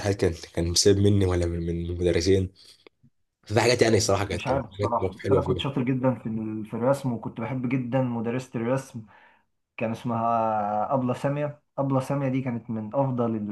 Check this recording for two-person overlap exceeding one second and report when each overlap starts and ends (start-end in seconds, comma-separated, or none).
4.3-5.6